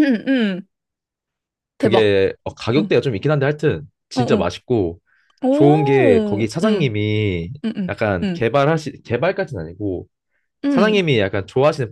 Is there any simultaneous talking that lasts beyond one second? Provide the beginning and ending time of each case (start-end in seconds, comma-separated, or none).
5.5-7.0